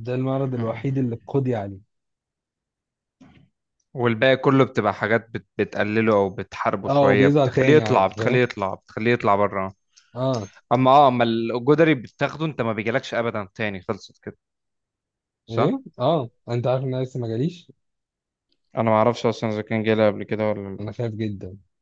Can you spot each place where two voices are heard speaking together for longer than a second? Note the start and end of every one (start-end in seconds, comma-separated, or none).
6.9-8.4